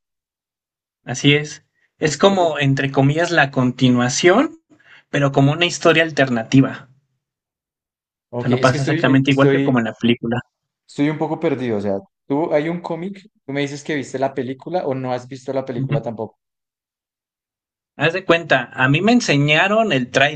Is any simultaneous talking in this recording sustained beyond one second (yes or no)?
yes